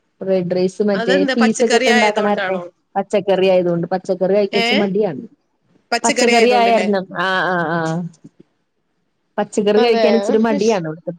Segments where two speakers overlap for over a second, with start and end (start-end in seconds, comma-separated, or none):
1.0-2.6